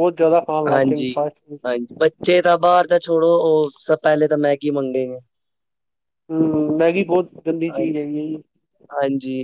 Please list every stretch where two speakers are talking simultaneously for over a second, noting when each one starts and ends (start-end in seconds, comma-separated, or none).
none